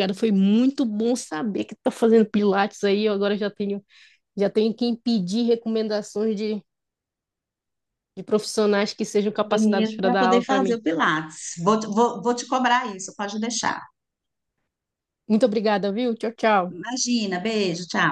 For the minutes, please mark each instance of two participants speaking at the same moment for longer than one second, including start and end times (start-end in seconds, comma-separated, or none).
9.3-10.8